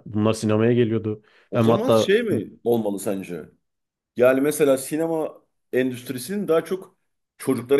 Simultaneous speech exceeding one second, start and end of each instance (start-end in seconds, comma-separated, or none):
none